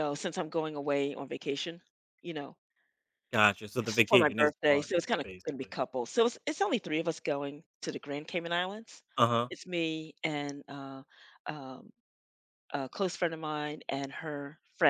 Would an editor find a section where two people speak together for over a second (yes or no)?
yes